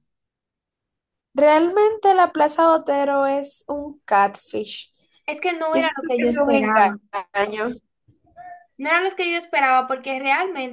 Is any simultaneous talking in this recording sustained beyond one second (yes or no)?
yes